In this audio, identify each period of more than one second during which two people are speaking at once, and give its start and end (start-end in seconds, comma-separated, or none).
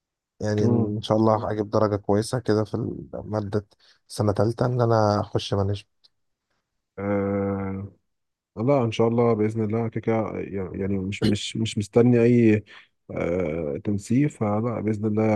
none